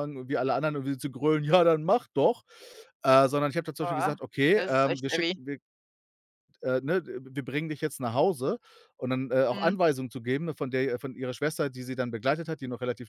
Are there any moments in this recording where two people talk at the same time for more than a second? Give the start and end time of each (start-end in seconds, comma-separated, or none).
3.8-5.4